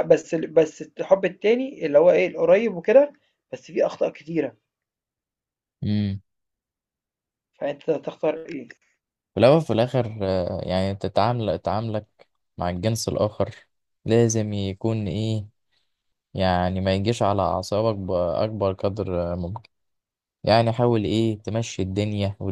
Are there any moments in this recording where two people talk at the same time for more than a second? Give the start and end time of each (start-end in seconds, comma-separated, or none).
none